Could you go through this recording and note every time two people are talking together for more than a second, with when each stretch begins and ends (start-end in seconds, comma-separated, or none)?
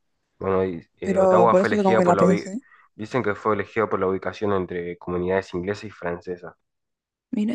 1.0-2.5